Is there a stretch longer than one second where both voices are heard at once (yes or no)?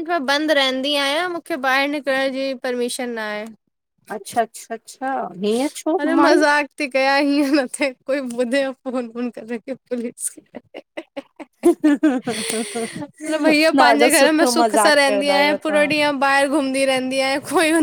yes